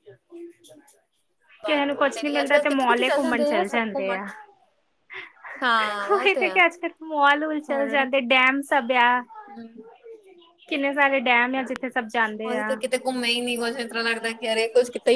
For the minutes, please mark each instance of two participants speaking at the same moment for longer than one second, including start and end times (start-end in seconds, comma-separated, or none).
1.6-4.2